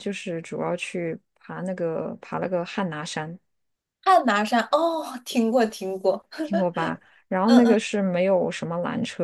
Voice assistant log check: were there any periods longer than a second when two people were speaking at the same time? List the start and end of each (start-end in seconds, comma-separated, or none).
none